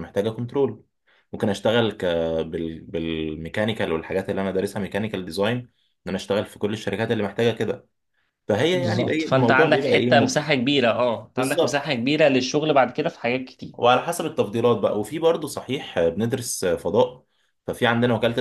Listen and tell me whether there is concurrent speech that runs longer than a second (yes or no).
yes